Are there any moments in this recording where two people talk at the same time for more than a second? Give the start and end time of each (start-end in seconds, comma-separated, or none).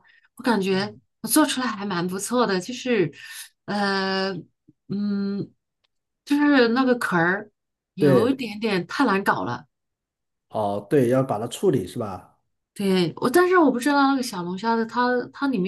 none